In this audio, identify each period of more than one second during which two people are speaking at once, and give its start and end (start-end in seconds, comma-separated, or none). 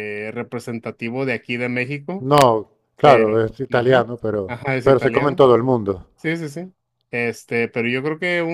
3.0-5.4